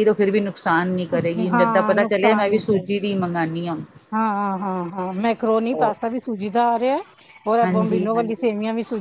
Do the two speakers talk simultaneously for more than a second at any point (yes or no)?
yes